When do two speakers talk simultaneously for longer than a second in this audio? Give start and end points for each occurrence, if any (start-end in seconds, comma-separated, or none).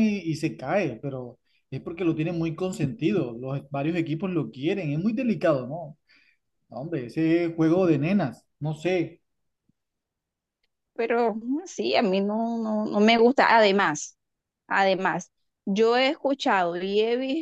none